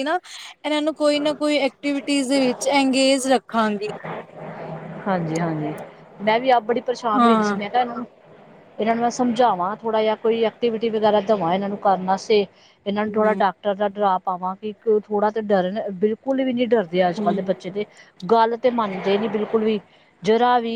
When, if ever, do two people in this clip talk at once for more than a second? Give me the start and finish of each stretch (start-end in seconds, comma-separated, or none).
none